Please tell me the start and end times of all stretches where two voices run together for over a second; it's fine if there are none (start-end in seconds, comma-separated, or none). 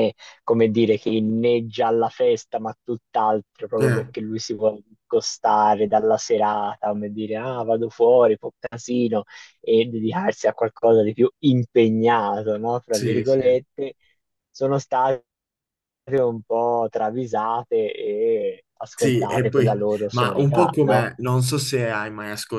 18.9-21.1